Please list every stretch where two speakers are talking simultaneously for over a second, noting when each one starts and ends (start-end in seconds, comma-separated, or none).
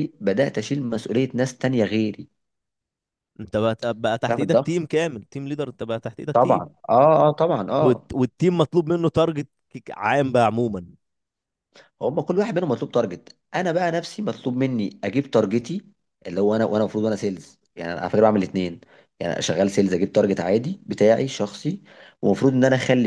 none